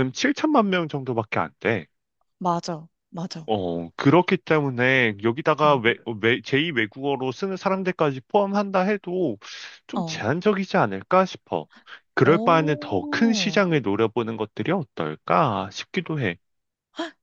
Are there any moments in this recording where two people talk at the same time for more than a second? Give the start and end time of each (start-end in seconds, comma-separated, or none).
12.2-13.6